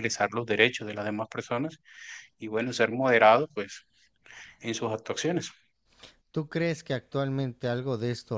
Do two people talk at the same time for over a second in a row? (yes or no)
no